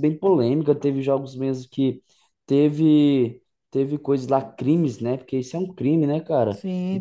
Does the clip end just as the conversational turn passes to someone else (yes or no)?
yes